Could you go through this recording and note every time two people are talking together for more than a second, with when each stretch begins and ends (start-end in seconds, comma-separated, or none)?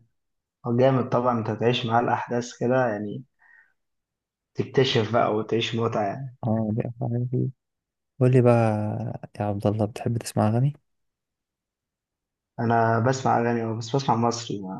none